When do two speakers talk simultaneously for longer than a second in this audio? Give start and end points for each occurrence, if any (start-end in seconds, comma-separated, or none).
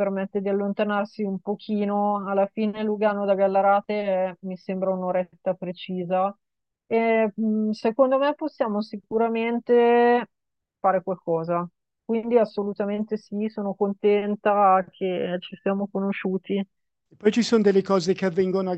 none